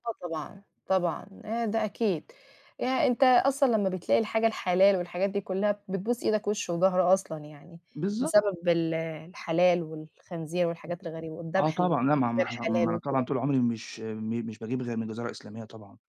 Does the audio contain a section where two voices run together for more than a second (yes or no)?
yes